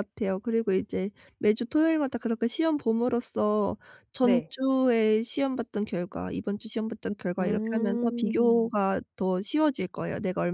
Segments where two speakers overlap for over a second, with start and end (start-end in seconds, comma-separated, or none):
7.4-8.7